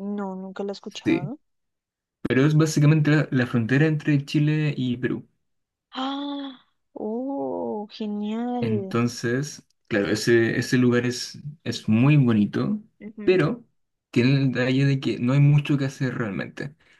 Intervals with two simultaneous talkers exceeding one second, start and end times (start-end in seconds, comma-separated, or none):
none